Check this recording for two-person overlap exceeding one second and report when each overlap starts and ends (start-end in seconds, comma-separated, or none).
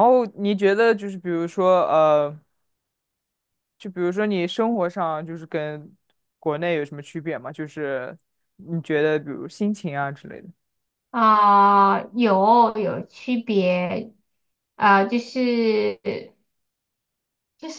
none